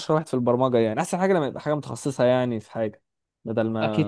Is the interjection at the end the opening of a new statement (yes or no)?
yes